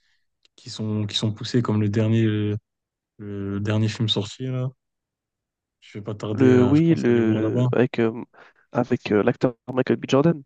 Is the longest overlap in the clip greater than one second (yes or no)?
yes